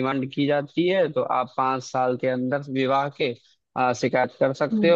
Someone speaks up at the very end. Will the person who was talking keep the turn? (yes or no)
yes